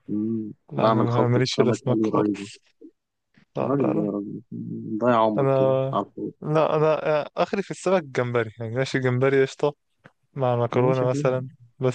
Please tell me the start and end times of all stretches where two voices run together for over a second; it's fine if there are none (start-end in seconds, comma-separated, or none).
0.7-2.5